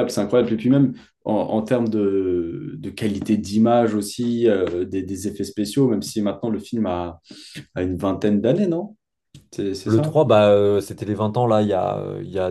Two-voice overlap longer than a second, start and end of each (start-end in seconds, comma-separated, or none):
none